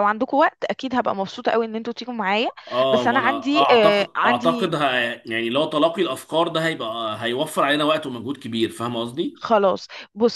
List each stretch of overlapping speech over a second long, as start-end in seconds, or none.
2.9-4.7